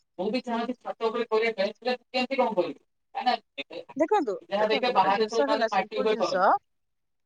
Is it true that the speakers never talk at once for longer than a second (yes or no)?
no